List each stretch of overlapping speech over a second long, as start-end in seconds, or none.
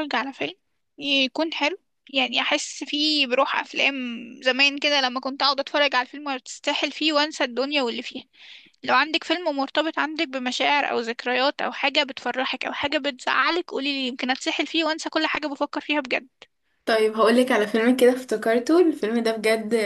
none